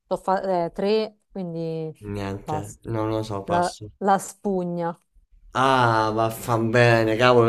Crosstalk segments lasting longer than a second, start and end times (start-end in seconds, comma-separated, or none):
none